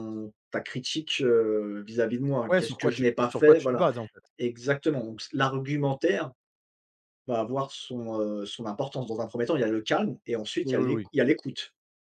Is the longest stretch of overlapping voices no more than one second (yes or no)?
no